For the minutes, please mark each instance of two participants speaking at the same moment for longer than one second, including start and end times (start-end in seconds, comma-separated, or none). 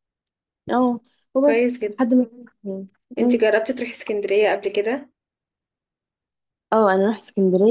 none